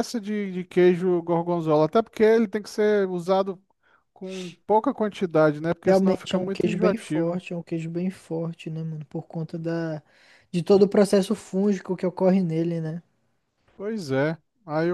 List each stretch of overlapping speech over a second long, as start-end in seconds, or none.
5.8-7.4